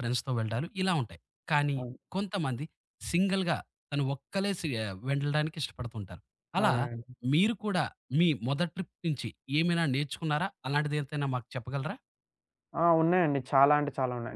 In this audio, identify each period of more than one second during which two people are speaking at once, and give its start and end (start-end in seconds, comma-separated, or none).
none